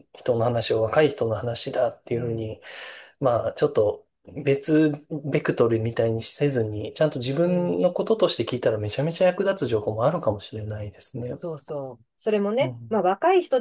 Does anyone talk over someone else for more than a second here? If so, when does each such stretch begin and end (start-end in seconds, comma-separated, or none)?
none